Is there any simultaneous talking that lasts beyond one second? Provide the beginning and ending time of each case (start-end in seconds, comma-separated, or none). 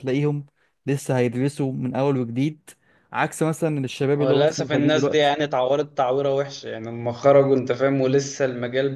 4.1-5.3